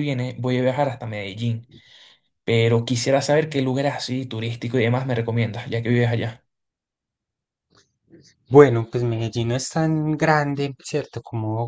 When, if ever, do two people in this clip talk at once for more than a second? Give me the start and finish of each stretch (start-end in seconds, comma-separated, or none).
none